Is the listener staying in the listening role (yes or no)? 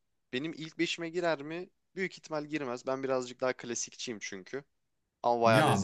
no